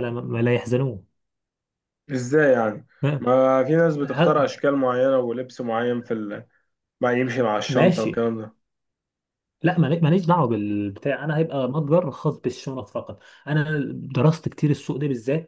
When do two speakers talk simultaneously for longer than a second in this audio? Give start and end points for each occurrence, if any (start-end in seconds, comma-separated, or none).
none